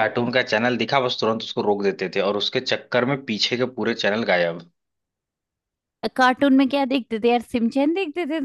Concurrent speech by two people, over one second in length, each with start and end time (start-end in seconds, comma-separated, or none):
none